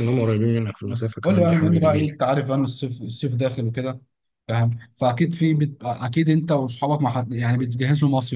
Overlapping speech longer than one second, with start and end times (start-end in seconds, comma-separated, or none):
0.8-2.1